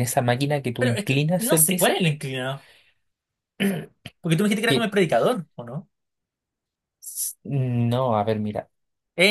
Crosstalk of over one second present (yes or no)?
yes